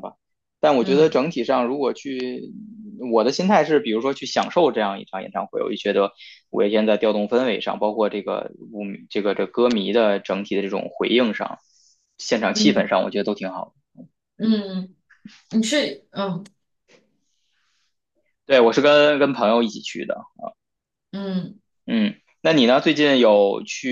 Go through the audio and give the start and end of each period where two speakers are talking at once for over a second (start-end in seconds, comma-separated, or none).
none